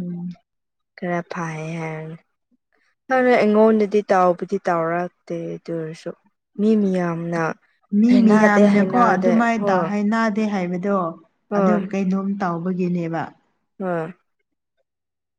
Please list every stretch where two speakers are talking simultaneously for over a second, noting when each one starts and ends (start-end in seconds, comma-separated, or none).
none